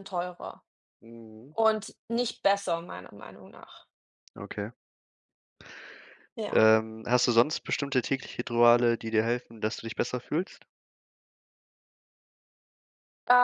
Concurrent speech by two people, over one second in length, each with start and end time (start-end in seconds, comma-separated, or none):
none